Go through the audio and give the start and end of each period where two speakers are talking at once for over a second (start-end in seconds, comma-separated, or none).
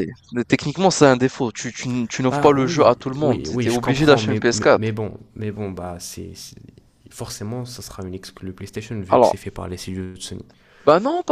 2.3-4.8